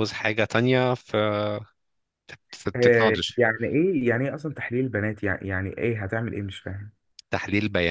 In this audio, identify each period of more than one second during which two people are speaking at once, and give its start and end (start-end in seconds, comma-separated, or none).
none